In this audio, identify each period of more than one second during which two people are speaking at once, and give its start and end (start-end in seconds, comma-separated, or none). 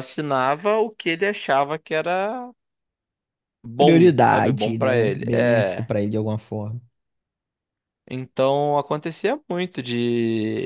3.8-5.9